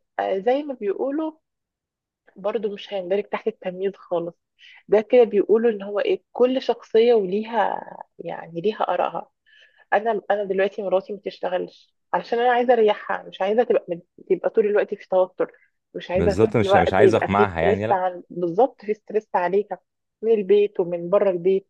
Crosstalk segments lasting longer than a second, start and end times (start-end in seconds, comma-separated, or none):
16.1-18.0